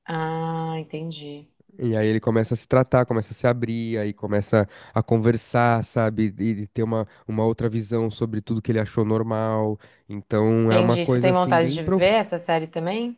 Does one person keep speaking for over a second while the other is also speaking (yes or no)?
yes